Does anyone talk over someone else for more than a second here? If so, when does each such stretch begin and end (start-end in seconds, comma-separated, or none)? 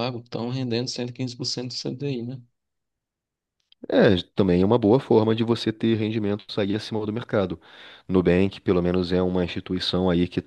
none